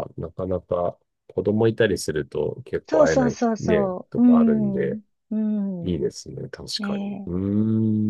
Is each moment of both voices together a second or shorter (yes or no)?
no